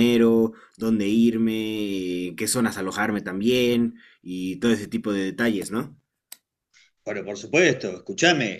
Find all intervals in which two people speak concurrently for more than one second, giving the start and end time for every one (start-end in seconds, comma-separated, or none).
none